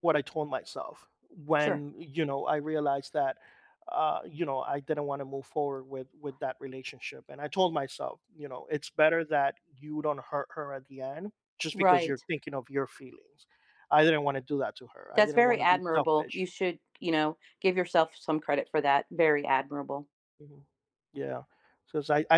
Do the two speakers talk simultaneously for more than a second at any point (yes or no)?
yes